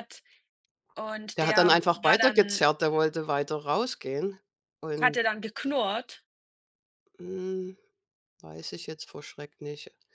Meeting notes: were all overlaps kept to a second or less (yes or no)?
no